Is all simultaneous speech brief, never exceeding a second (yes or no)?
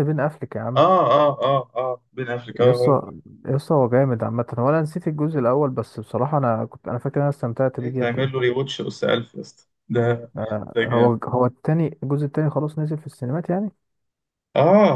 yes